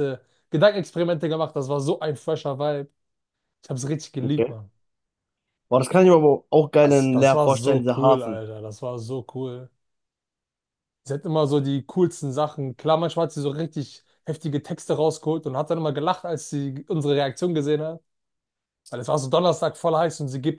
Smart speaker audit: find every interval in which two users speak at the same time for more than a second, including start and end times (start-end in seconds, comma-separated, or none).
6.8-8.4